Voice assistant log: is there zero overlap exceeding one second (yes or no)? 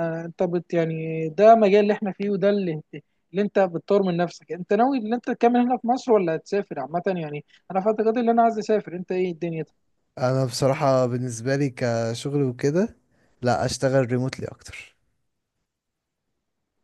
yes